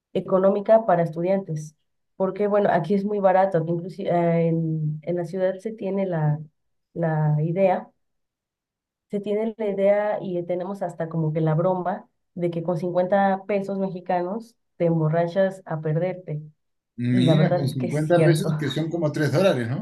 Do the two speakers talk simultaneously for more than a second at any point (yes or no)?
yes